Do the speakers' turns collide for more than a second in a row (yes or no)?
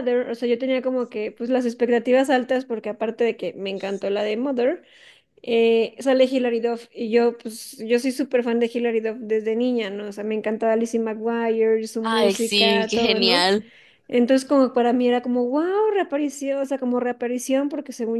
yes